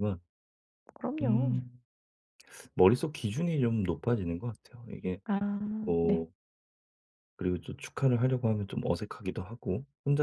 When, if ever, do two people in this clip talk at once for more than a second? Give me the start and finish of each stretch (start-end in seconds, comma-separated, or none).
none